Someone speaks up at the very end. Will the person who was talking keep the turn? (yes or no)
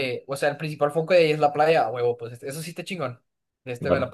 yes